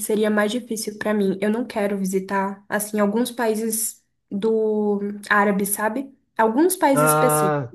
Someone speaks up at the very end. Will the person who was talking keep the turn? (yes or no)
yes